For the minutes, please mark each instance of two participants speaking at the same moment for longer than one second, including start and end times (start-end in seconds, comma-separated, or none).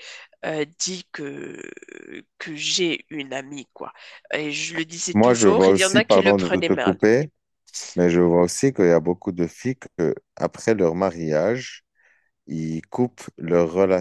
5.1-7.0